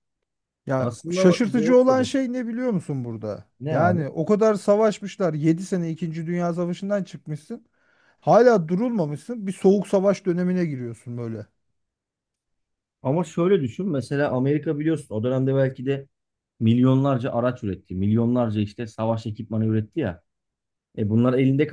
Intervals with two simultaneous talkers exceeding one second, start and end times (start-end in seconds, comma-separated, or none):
0.8-2.0